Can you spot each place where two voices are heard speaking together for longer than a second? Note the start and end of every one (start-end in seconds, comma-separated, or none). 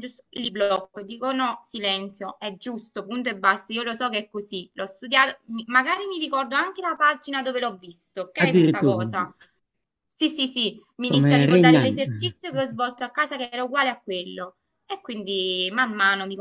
11.1-12.3